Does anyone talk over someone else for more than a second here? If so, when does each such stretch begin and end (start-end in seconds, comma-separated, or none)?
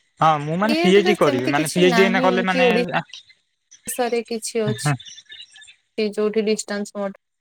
0.7-2.6